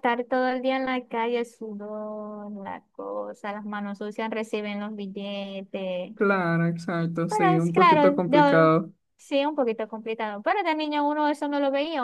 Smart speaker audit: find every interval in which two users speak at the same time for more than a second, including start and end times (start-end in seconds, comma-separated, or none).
7.3-8.7